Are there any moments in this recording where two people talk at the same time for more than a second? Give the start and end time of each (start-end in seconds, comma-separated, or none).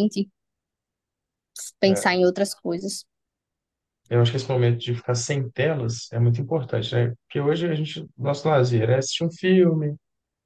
none